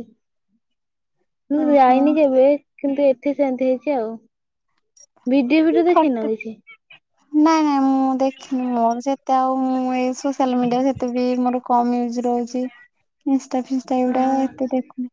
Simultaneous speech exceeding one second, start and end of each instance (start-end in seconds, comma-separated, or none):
none